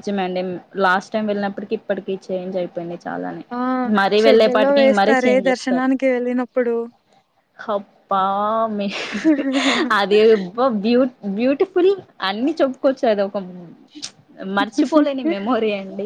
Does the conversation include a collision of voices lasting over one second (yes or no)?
yes